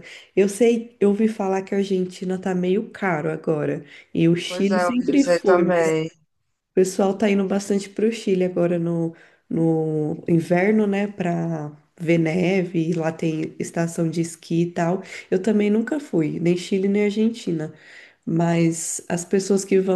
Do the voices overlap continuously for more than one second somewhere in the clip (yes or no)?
yes